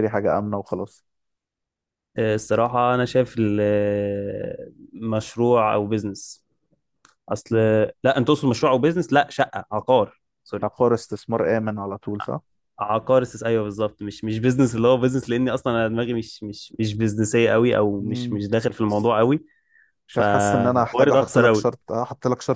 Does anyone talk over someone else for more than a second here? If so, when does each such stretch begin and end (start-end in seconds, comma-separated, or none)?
20.1-21.7